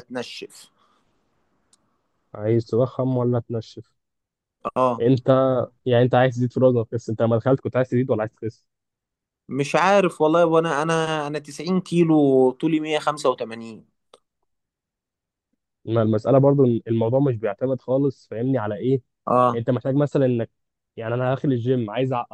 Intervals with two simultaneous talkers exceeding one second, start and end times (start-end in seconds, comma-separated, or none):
none